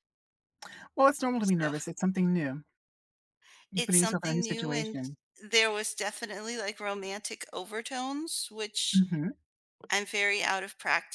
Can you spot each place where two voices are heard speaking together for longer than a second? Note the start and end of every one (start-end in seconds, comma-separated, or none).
3.8-5.0